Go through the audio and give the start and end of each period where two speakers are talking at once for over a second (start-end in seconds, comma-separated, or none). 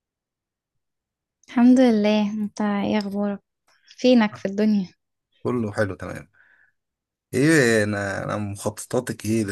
none